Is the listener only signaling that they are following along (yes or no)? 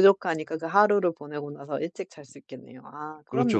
no